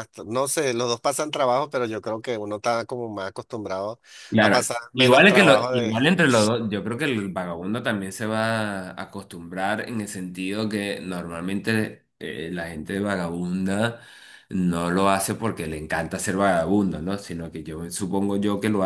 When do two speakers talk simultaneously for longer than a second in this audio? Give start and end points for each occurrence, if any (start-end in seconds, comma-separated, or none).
4.4-6.2